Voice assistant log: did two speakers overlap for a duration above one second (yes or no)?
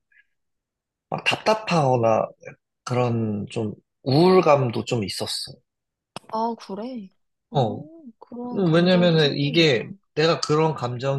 yes